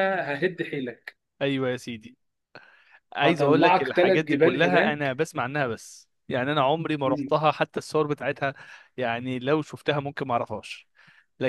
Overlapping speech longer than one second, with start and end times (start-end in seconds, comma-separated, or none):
3.2-5.2